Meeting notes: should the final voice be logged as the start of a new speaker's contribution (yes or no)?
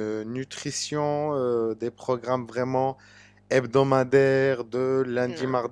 no